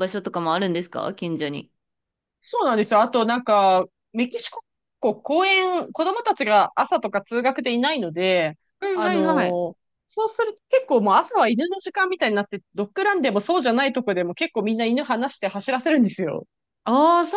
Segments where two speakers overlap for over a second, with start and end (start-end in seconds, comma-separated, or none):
none